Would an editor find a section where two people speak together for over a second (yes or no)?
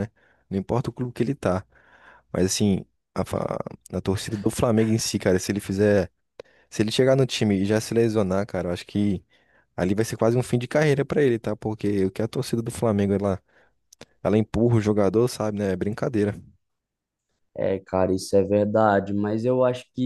no